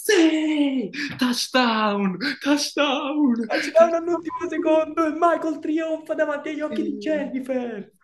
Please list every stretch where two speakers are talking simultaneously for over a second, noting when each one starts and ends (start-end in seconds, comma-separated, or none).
3.8-5.0